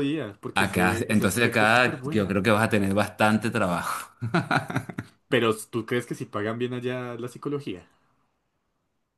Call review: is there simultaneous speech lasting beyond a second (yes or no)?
yes